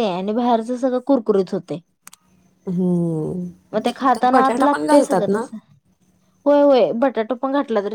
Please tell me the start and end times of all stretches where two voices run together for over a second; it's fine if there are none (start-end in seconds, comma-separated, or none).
4.1-5.4